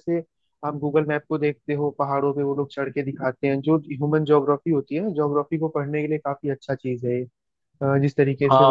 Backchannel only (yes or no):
no